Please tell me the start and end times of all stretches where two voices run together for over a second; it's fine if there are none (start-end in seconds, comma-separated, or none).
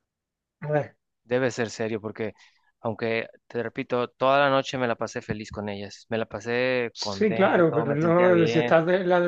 6.9-8.7